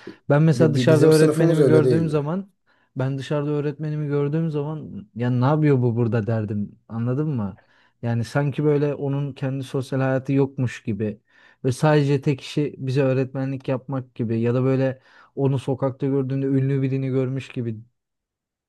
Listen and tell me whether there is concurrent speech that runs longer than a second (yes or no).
yes